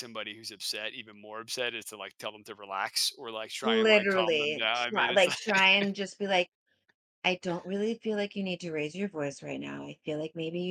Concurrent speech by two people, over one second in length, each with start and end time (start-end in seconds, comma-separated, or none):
3.6-5.4